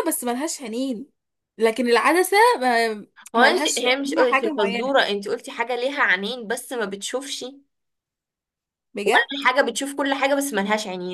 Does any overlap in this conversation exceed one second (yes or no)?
yes